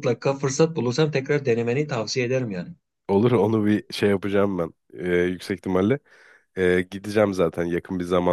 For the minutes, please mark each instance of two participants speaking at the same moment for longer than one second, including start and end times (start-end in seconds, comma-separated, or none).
none